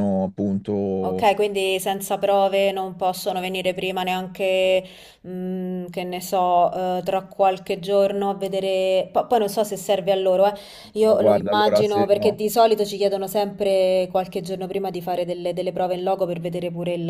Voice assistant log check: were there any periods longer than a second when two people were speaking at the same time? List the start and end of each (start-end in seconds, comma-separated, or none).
11.0-12.4